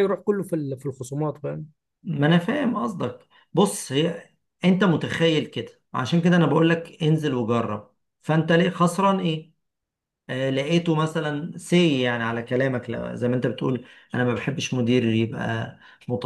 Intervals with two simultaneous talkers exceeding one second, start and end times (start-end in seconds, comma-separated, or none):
none